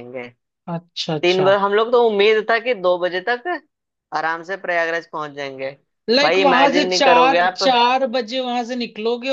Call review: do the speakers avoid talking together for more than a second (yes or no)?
no